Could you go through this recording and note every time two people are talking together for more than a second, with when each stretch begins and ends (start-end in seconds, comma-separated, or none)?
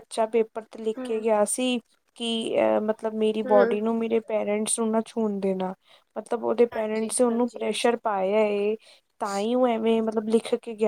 6.7-8.0